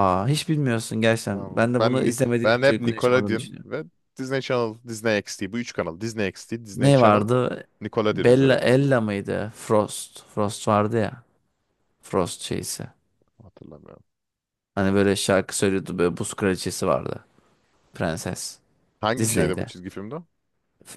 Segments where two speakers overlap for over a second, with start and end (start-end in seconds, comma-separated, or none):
1.3-3.7